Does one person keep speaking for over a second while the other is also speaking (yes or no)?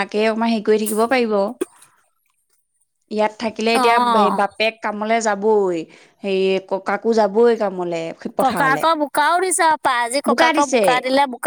no